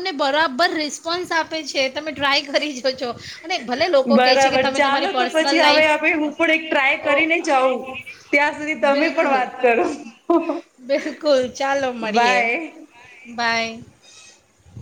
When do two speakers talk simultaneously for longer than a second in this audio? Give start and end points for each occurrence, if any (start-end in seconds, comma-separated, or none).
4.2-6.0